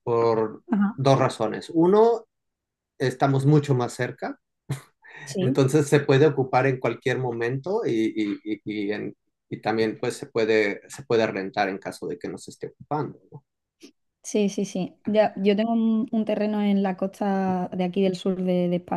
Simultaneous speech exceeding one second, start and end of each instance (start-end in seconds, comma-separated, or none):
none